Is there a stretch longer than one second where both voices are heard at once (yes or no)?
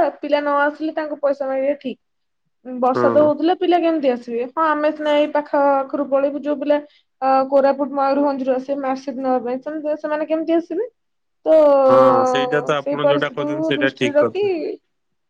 yes